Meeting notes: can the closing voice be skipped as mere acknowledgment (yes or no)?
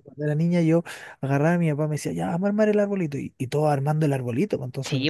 no